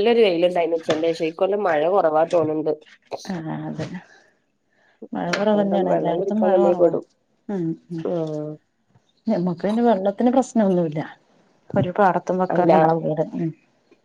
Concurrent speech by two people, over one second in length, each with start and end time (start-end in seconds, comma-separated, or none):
5.4-6.9